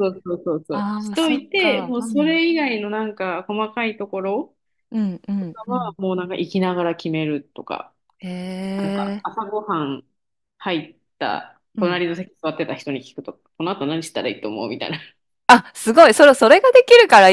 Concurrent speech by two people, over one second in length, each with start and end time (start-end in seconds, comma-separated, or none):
0.7-2.4